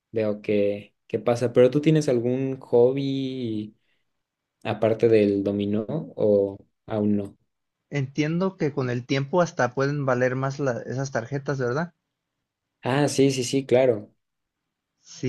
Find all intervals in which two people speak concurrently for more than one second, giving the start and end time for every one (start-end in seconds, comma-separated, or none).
none